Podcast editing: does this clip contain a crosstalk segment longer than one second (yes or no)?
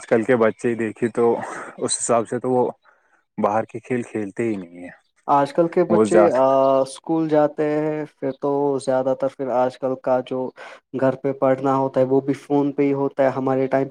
no